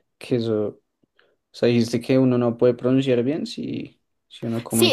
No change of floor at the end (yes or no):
no